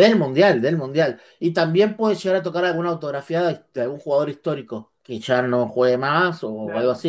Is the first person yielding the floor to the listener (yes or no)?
no